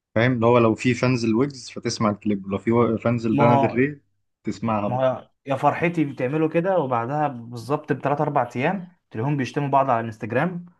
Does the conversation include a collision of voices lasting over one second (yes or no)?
no